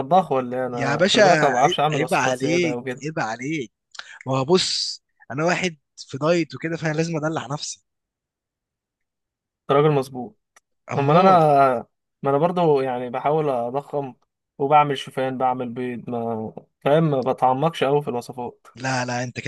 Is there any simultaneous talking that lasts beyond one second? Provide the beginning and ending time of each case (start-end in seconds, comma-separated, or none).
0.7-3.0